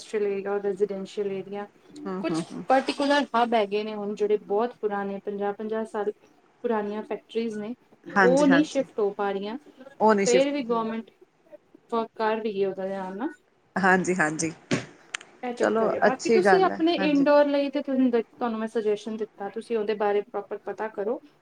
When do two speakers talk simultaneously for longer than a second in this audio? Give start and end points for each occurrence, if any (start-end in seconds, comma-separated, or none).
none